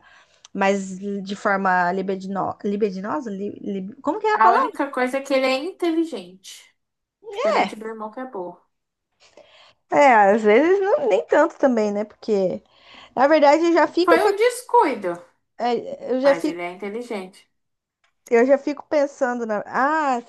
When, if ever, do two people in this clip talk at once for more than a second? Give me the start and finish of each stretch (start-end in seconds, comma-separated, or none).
none